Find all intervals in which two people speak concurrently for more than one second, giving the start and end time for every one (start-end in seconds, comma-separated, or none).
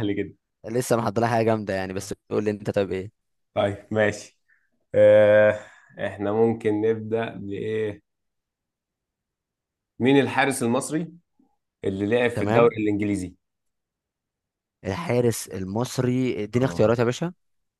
none